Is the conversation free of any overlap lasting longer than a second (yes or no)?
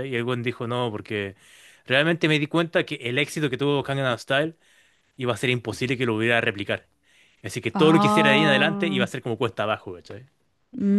no